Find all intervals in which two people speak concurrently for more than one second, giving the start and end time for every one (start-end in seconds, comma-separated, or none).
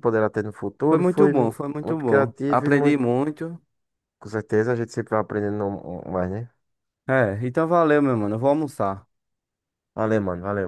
0.9-3.1